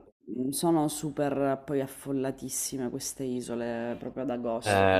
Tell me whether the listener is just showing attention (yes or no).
no